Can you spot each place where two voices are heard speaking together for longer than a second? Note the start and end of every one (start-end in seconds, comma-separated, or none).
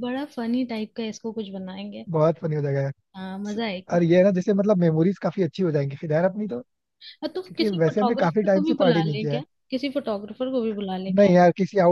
7.5-9.4